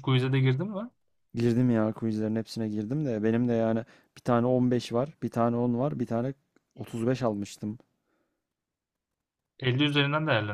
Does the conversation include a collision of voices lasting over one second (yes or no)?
no